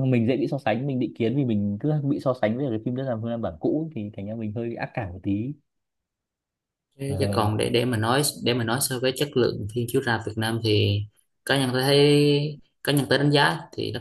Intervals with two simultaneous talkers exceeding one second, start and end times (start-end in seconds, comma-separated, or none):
none